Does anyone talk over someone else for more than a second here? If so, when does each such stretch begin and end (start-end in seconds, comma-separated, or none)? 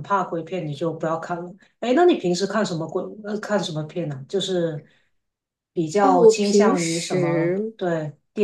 6.0-7.7